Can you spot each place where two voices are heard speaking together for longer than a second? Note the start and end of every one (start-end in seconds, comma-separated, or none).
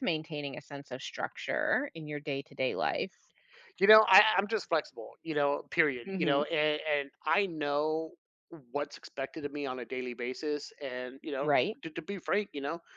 none